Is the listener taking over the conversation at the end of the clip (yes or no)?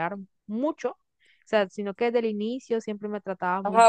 yes